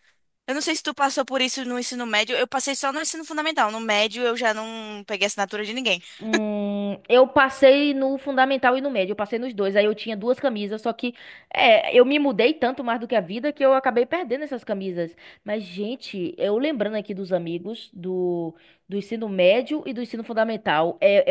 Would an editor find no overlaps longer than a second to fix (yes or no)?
yes